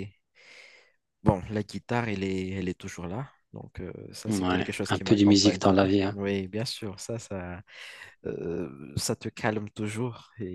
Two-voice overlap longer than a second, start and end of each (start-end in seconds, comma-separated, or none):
4.2-6.2